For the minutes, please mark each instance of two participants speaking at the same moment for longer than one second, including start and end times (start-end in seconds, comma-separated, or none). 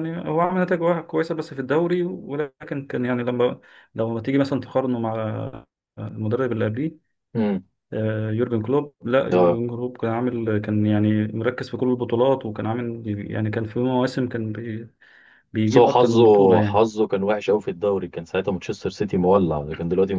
15.7-16.9